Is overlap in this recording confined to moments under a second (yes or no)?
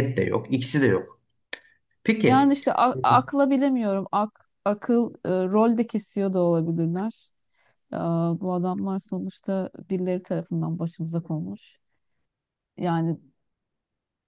yes